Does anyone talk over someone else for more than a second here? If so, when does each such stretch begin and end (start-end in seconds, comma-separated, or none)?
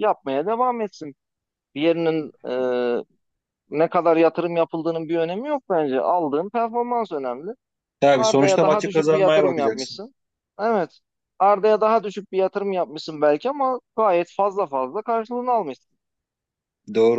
8.1-10.0